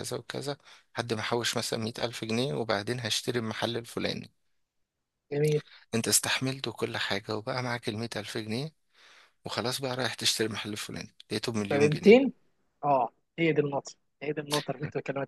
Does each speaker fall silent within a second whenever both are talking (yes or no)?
yes